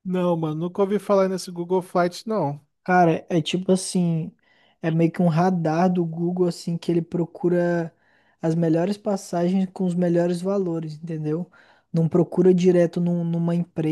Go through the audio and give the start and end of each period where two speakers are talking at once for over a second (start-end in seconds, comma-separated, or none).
none